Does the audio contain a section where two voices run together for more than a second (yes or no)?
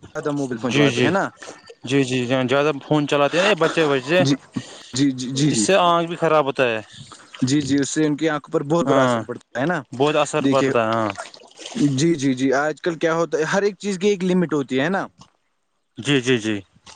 no